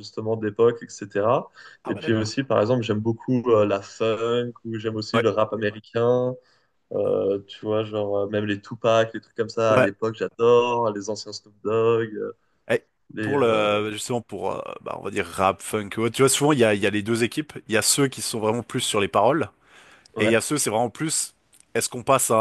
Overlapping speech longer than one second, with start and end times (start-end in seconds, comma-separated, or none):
none